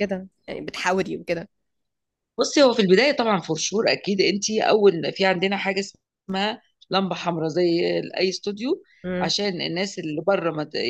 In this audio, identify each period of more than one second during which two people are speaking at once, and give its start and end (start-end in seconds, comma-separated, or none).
none